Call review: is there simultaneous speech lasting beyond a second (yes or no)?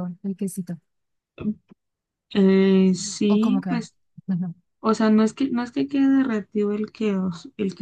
no